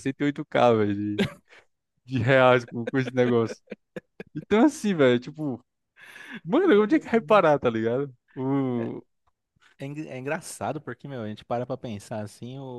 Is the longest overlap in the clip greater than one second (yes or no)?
no